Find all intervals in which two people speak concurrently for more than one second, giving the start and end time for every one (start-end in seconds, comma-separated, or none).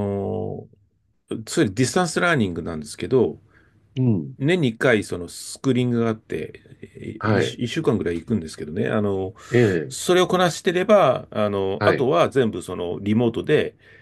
none